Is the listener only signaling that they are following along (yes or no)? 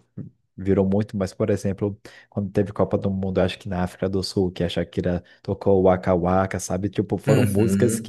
yes